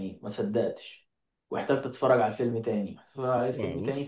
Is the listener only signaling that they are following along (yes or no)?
yes